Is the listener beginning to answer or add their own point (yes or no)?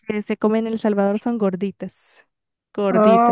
yes